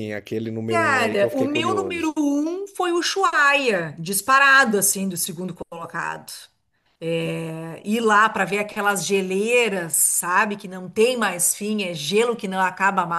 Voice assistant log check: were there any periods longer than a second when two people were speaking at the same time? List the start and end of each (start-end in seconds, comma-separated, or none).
0.7-2.2